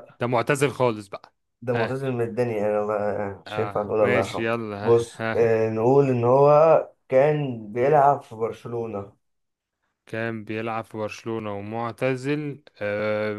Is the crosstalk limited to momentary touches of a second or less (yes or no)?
no